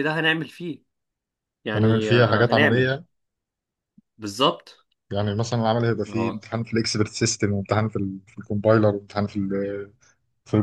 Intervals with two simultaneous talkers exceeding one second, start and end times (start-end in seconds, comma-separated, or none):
1.7-3.0